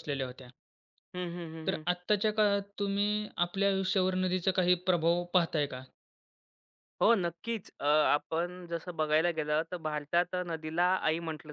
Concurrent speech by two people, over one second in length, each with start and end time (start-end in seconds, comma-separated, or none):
none